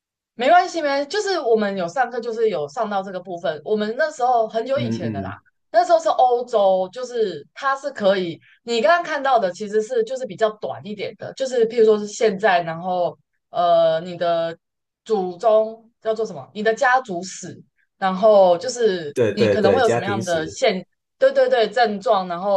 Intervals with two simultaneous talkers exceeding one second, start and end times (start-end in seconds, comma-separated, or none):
19.1-20.6